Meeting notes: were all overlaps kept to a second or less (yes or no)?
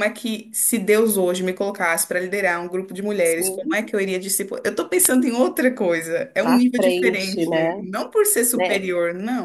no